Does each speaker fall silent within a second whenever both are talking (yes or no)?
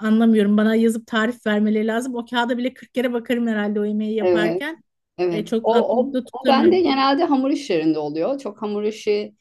no